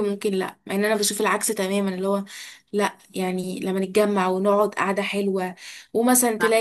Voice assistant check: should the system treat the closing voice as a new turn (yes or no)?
no